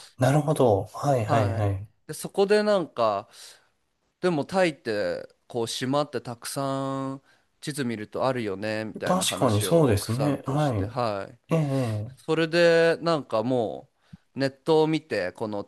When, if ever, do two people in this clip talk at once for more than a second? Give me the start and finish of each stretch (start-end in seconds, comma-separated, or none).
9.0-10.7